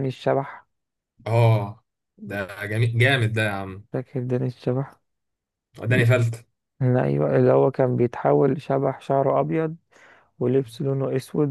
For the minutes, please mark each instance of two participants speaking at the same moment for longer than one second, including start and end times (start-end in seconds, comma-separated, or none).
none